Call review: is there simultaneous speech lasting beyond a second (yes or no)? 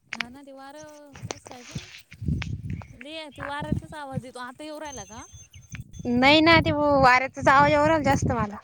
no